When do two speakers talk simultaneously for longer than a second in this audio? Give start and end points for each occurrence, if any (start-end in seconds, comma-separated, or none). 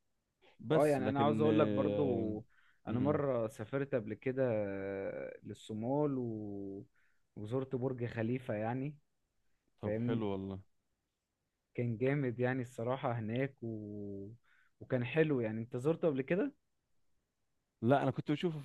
0.7-2.3